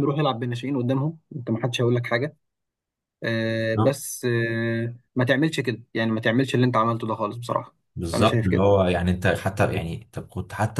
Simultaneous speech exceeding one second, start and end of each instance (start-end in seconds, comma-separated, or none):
none